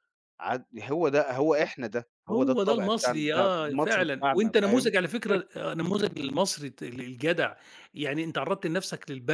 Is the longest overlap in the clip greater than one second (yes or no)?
yes